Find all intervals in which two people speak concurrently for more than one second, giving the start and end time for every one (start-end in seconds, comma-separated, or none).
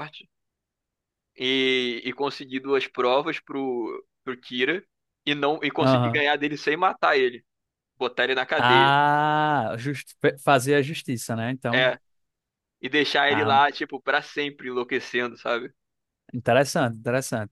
none